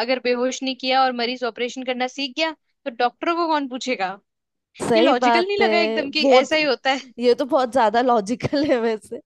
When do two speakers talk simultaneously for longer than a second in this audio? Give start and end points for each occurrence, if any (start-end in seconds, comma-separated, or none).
5.0-6.5